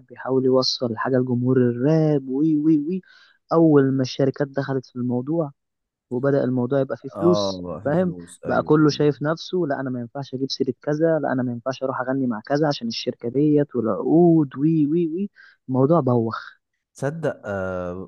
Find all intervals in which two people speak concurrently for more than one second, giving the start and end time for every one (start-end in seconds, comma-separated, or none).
7.2-9.1